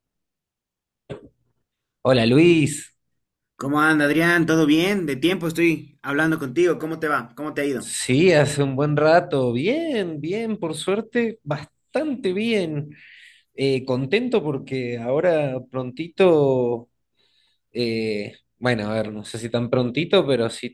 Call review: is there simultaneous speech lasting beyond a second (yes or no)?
no